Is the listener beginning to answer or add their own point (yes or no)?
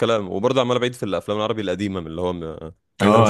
yes